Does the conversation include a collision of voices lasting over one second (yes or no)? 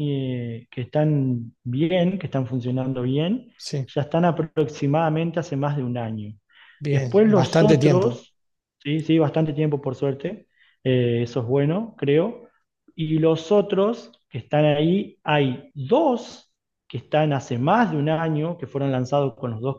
yes